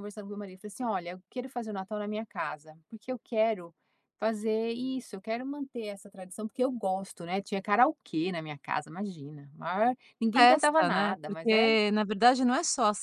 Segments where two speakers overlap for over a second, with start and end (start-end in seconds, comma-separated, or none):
10.3-11.8